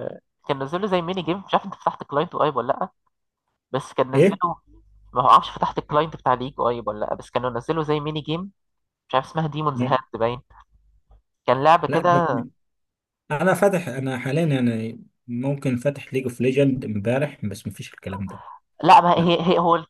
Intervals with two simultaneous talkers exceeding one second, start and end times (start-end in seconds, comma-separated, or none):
none